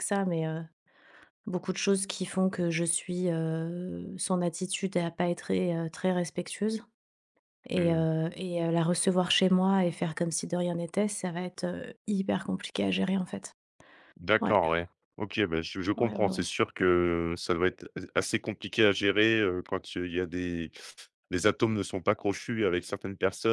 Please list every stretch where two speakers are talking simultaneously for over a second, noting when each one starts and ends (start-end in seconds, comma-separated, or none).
none